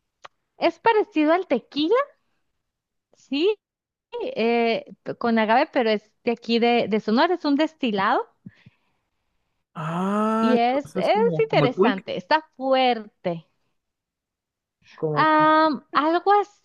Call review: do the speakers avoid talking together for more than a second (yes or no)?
no